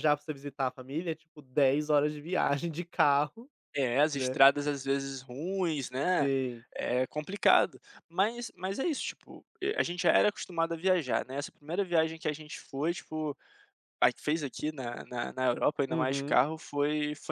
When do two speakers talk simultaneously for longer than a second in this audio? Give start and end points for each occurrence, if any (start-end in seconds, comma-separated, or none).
none